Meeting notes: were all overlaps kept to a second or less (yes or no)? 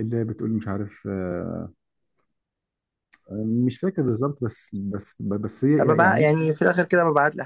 yes